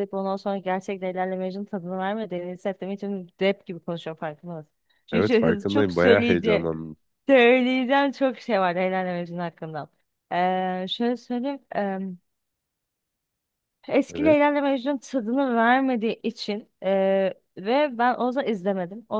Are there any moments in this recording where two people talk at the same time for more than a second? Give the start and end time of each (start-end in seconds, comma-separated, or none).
5.1-6.7